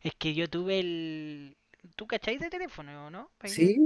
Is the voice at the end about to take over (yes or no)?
yes